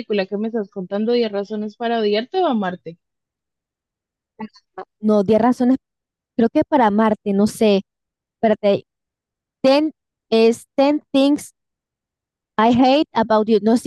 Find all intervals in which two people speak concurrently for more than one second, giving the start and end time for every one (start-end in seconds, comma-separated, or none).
none